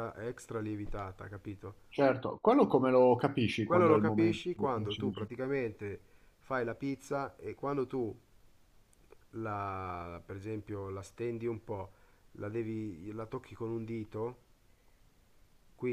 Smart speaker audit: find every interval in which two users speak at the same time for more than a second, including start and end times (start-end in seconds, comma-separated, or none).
3.6-5.3